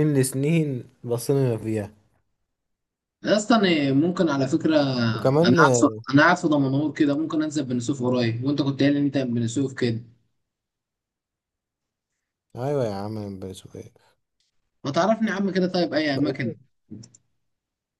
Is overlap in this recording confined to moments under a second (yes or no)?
yes